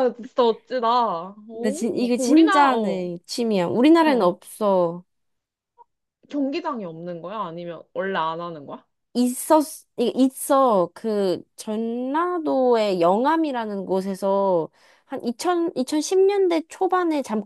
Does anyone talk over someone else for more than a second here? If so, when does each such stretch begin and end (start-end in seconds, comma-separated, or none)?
1.6-3.1